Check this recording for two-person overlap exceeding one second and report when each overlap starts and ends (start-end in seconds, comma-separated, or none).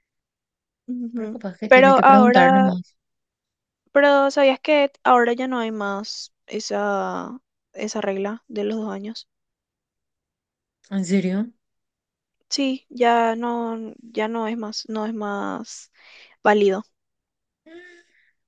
1.1-2.7